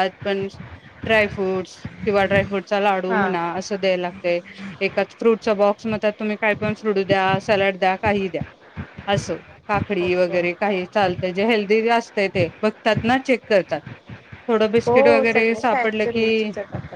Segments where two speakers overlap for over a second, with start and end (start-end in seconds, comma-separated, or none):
14.8-16.2